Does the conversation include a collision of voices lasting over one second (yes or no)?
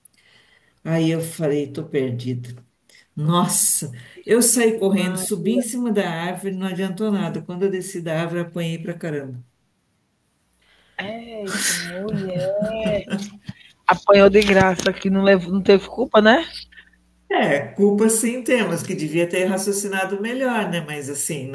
no